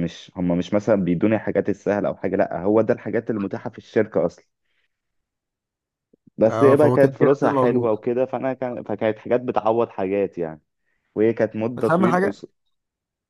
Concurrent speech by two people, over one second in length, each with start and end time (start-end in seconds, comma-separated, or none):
6.5-7.9